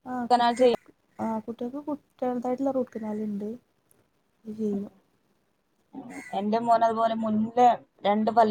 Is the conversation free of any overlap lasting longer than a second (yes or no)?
yes